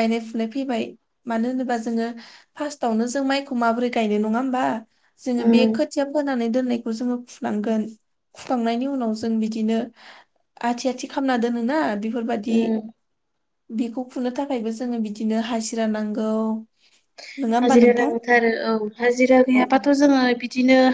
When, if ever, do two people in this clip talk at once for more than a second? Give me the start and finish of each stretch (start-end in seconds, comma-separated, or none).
none